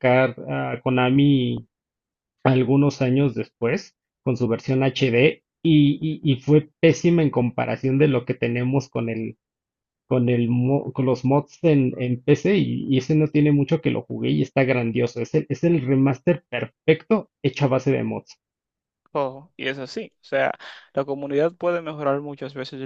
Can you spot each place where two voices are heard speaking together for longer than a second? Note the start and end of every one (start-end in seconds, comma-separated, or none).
none